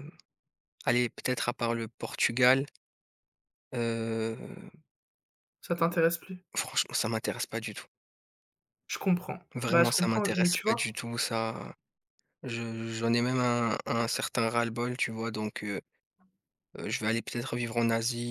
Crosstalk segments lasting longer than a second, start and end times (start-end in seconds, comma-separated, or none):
9.5-10.9